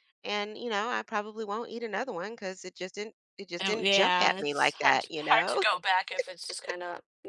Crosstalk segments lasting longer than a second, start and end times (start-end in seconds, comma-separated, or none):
3.6-5.6